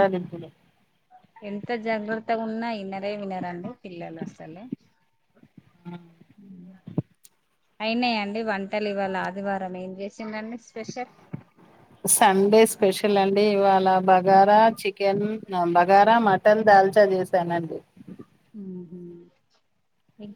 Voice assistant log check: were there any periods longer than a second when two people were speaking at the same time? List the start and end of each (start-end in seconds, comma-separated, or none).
none